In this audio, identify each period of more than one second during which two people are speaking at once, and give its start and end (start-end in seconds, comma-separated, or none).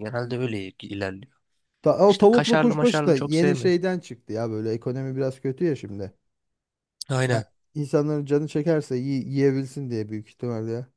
2.1-3.8